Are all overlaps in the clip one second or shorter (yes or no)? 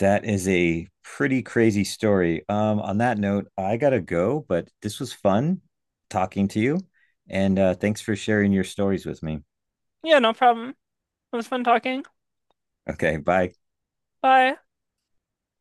yes